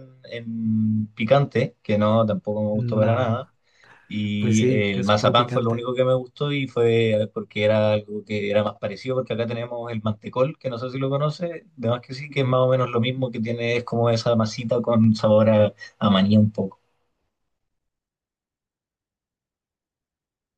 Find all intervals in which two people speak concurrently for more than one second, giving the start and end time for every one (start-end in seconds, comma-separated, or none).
4.4-5.9